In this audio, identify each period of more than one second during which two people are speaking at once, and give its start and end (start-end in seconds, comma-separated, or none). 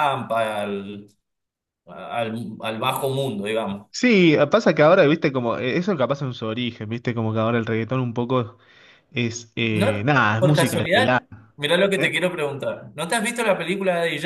9.7-11.2